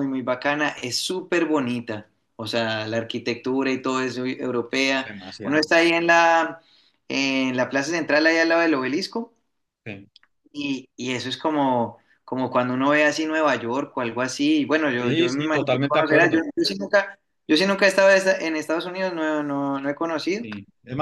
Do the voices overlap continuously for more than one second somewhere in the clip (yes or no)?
yes